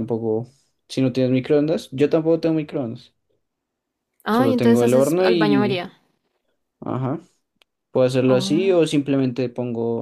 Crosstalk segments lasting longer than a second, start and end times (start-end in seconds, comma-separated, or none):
4.3-5.8